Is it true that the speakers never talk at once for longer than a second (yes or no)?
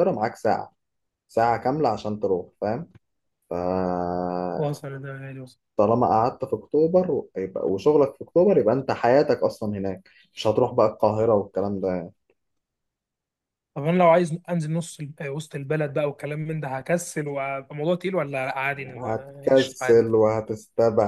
no